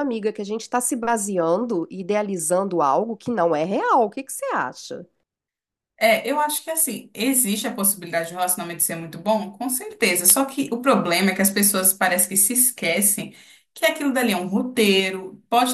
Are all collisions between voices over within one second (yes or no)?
yes